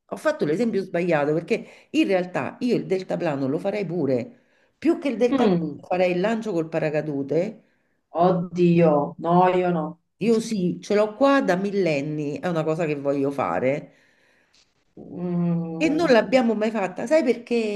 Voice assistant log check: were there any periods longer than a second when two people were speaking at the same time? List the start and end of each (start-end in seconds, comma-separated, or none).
none